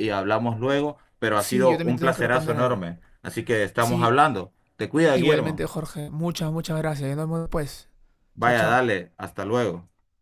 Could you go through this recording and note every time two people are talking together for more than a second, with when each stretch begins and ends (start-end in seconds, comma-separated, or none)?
1.4-2.8